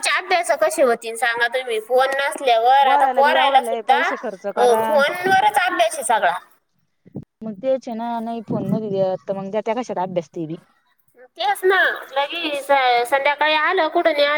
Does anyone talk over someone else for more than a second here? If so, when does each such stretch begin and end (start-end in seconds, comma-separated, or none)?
2.8-5.0